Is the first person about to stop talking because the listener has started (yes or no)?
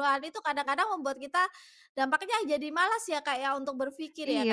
yes